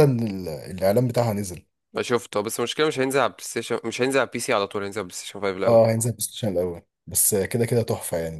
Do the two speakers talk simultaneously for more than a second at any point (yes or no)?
no